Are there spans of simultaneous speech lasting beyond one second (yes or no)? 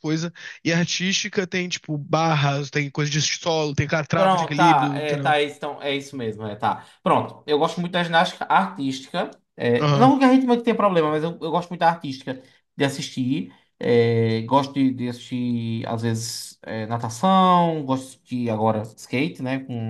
yes